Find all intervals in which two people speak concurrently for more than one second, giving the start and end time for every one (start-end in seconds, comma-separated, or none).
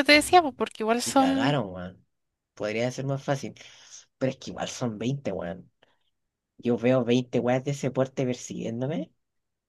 none